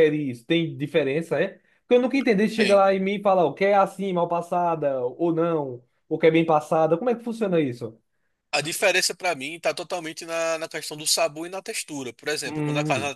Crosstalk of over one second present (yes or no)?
no